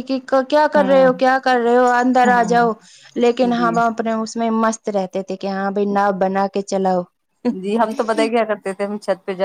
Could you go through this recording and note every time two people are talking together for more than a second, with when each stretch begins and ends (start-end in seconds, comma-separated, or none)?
none